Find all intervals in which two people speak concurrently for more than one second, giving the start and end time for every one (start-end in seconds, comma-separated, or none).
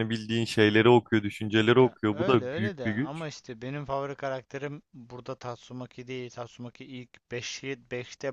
1.8-3.2